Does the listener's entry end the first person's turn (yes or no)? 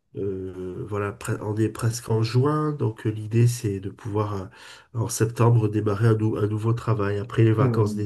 yes